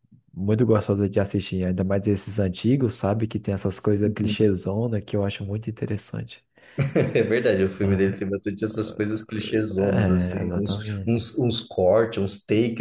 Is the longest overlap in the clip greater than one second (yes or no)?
yes